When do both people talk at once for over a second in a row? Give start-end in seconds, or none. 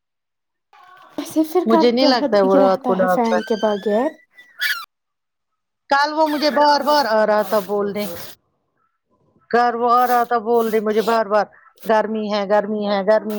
1.7-3.4